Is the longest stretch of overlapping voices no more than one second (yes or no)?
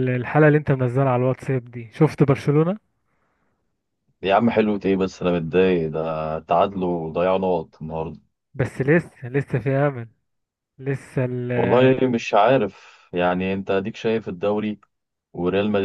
yes